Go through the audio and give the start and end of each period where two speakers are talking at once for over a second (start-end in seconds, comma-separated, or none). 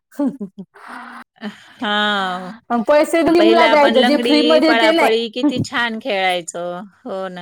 3.4-5.1